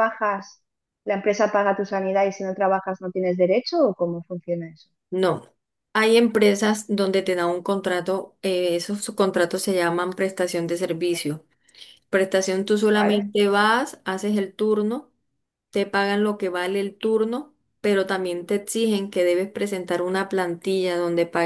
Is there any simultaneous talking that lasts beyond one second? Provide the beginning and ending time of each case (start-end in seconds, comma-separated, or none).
none